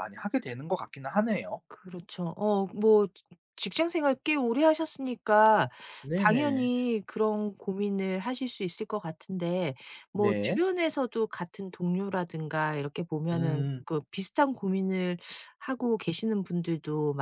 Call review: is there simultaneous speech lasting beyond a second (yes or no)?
no